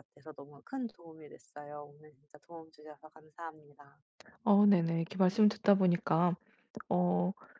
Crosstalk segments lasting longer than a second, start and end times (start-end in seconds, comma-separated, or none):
none